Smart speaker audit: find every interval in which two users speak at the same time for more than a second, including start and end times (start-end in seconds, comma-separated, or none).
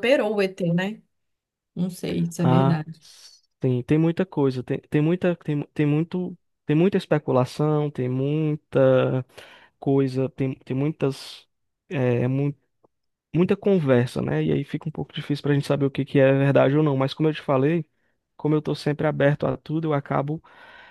none